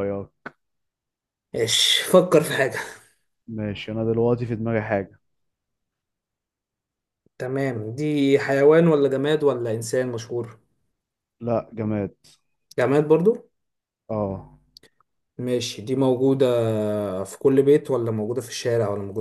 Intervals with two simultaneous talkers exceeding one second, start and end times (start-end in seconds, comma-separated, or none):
none